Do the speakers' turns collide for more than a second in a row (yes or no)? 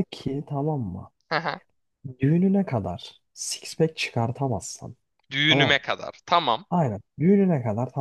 no